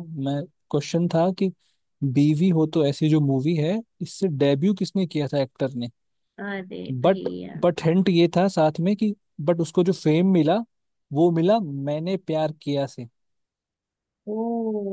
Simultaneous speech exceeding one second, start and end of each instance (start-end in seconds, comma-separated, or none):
none